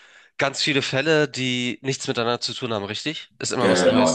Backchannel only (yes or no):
no